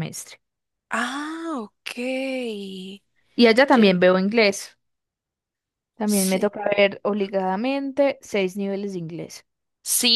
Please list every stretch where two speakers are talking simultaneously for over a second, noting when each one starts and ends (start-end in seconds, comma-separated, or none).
none